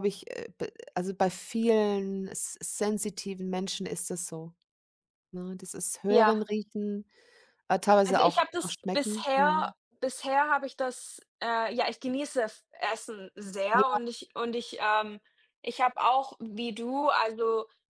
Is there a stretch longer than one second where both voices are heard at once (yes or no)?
yes